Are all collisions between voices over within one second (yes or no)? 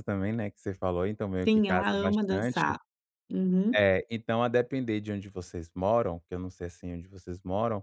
no